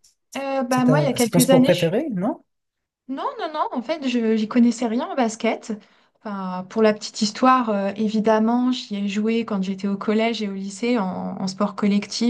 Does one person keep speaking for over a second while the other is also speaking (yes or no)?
yes